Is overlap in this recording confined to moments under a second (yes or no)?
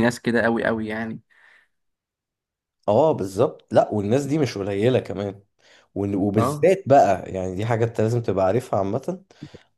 yes